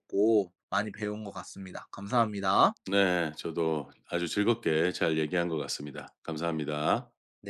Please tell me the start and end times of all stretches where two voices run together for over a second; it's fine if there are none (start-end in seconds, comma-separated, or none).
none